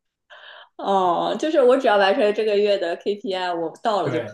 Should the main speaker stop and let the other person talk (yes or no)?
yes